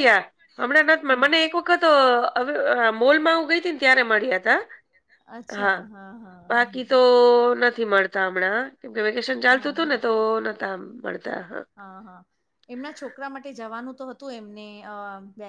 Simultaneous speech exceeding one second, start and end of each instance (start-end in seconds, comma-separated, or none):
none